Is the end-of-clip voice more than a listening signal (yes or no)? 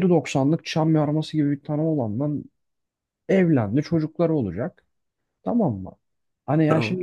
no